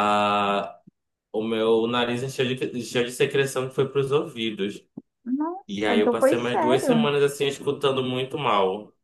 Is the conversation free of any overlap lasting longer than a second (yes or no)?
no